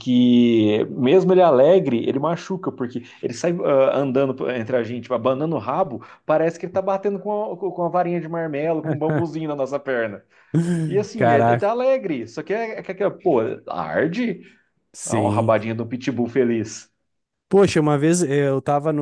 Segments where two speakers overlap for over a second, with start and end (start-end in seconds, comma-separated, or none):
none